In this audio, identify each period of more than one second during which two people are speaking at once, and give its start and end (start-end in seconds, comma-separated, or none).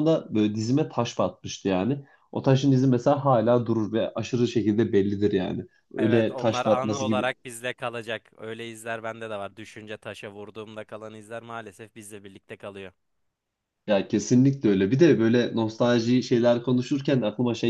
6.0-7.3